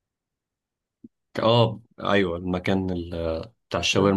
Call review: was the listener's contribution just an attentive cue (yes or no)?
yes